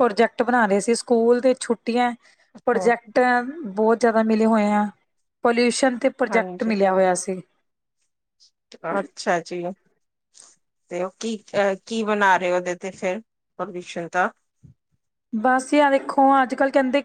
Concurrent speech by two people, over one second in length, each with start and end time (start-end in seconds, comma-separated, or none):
none